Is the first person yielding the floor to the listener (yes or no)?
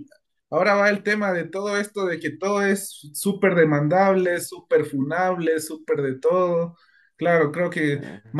no